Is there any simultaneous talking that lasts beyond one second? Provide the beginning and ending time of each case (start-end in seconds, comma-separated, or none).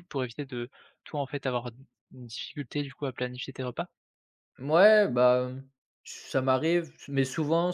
none